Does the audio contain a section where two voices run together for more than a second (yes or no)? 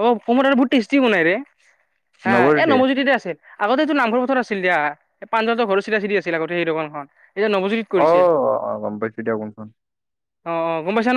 no